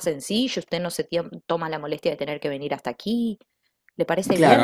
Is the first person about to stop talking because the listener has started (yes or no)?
yes